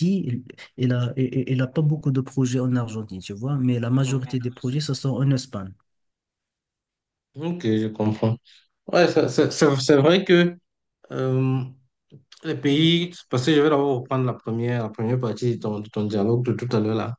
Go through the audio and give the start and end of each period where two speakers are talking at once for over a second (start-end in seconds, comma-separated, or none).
none